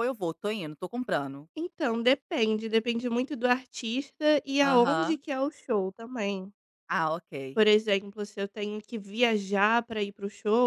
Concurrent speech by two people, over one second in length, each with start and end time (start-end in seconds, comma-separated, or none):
none